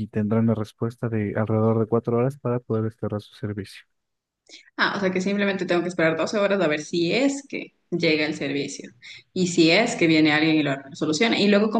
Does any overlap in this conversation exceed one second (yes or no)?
no